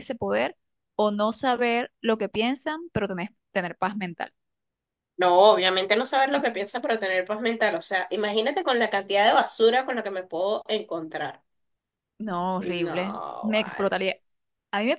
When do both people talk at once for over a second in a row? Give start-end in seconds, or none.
12.6-14.0